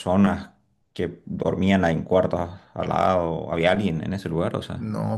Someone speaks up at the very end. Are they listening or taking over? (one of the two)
taking over